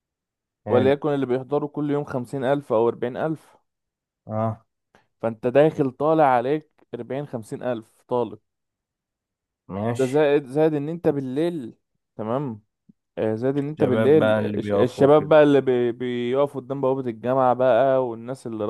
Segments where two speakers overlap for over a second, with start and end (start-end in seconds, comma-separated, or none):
13.8-15.3